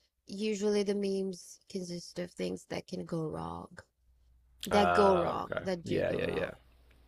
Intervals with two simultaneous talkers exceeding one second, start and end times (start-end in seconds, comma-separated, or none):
4.7-6.5